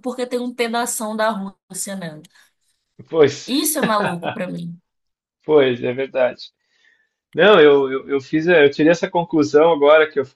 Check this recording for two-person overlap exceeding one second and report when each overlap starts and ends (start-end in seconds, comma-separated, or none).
none